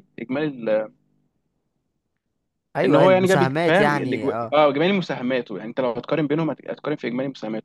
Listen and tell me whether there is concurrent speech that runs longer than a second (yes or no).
yes